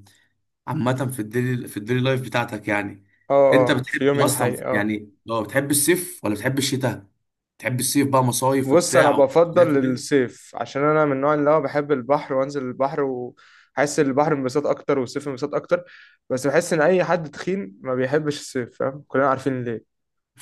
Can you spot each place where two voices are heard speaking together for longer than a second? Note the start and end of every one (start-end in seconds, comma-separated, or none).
3.5-4.9, 8.7-10.0